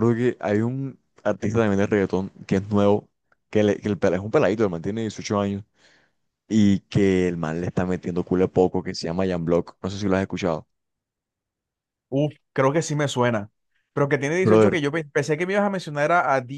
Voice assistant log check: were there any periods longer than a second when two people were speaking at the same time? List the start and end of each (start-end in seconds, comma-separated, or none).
none